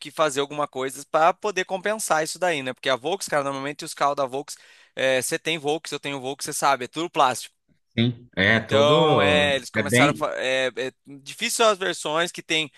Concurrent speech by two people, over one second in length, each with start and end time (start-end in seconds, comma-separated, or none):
8.5-10.3